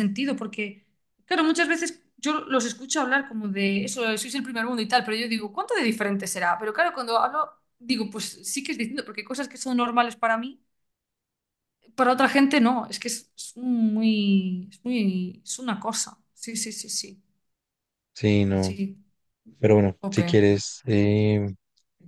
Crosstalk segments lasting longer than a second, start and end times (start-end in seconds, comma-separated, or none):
none